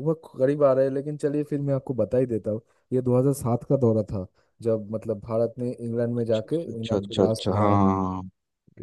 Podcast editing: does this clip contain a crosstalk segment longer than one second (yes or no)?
yes